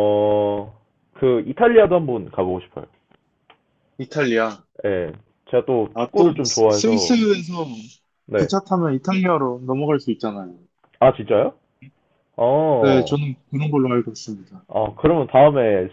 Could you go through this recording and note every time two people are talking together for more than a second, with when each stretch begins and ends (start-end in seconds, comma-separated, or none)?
5.9-7.2